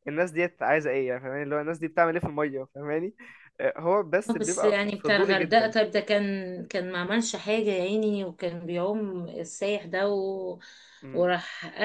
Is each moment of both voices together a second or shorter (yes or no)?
no